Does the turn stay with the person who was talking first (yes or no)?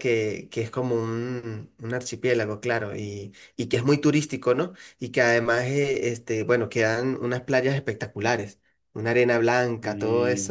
yes